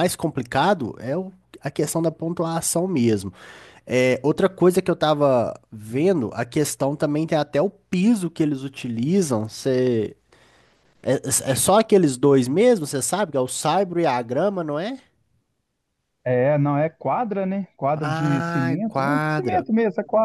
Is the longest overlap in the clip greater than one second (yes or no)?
yes